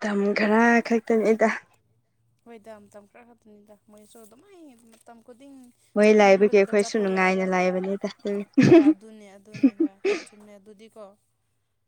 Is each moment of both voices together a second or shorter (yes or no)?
no